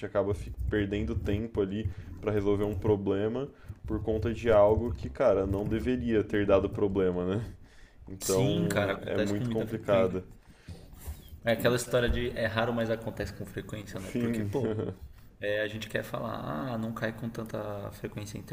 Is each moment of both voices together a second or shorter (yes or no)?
no